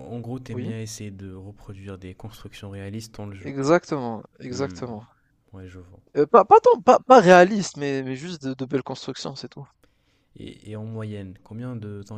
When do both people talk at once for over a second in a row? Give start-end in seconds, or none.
none